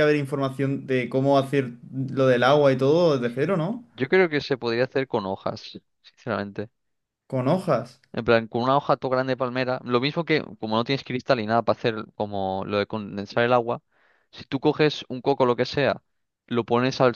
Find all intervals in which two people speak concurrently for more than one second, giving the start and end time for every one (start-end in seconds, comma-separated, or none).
none